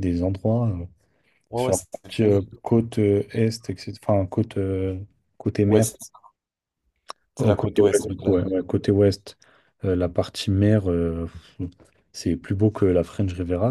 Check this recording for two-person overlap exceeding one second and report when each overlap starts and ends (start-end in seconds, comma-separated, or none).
7.4-8.6